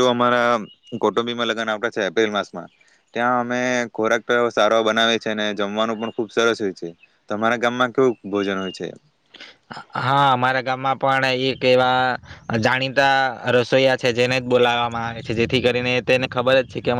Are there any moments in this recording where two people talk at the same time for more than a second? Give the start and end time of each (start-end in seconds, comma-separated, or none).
none